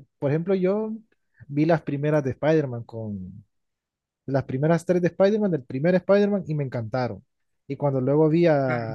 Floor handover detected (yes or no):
no